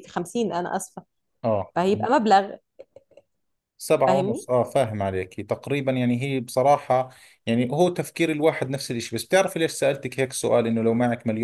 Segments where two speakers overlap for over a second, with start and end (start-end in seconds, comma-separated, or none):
none